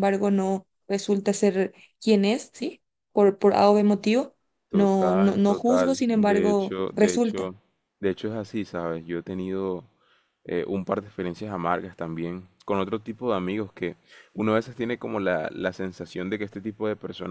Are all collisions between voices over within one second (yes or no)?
no